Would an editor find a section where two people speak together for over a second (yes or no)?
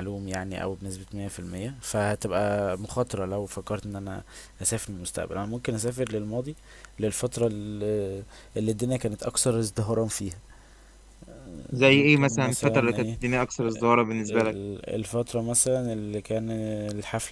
yes